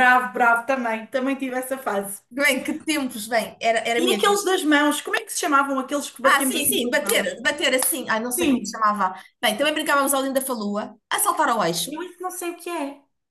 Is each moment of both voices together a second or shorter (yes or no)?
no